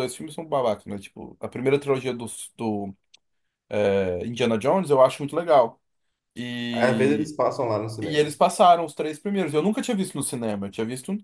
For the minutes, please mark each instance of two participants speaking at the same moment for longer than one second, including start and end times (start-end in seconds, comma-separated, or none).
none